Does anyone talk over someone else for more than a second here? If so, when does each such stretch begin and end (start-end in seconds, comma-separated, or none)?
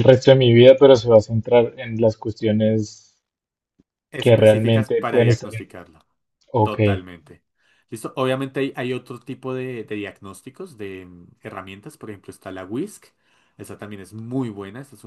4.2-5.7